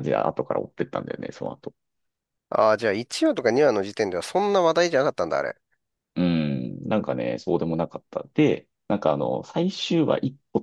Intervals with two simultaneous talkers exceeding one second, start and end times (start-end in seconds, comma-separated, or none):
none